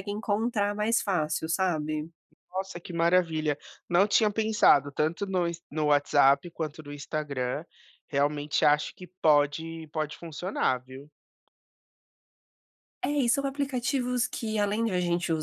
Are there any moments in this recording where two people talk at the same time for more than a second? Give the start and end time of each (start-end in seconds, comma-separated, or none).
none